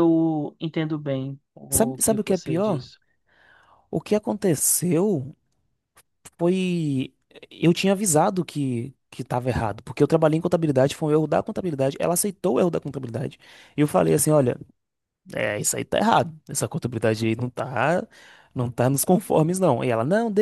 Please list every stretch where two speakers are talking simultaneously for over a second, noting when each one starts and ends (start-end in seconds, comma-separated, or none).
1.7-2.9